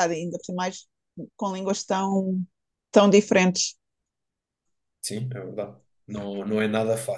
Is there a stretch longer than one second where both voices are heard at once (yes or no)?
no